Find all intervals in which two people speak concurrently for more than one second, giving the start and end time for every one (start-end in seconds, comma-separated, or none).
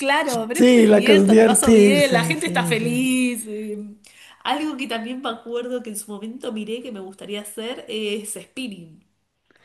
0.5-3.1